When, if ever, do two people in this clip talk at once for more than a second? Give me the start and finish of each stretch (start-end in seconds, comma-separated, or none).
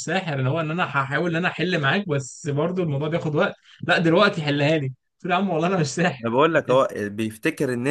none